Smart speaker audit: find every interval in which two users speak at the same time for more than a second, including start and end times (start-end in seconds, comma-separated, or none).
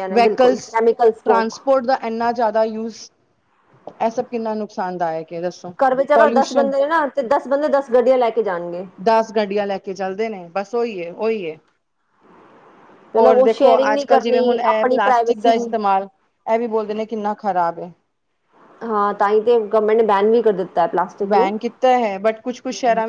13.2-15.5